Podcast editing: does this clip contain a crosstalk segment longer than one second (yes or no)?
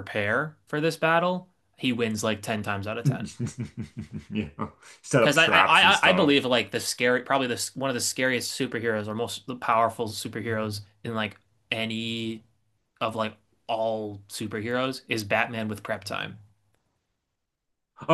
yes